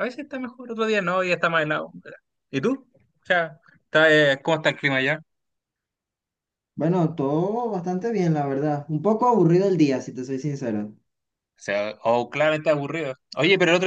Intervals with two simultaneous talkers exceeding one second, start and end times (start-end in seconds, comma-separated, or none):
none